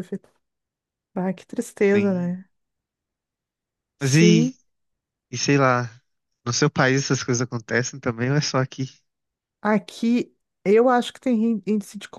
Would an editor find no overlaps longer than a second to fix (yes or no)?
yes